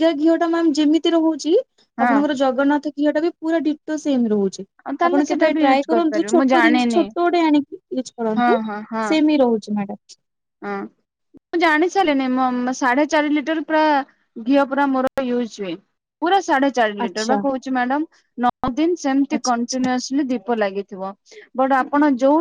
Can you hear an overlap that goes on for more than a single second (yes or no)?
yes